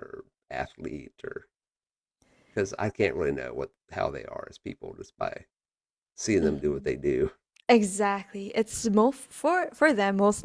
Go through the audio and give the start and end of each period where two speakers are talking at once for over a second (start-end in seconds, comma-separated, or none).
none